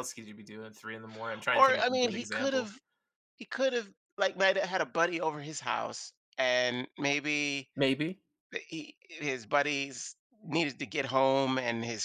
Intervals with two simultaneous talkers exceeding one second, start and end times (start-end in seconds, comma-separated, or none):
1.5-2.8